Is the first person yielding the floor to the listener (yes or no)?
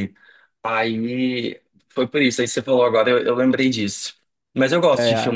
no